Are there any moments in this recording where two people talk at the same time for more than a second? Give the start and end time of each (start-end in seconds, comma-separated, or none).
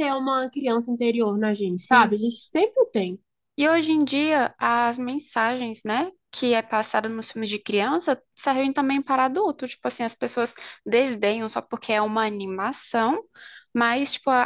none